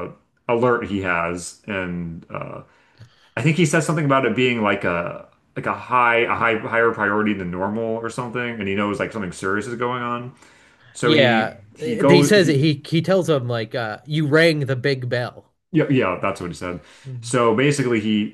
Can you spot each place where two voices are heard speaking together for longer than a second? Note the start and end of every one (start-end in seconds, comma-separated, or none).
11.0-12.6